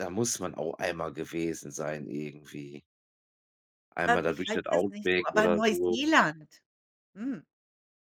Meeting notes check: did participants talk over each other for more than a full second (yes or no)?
yes